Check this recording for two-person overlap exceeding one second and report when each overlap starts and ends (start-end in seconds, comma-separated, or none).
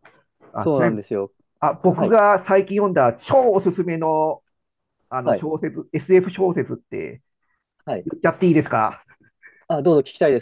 none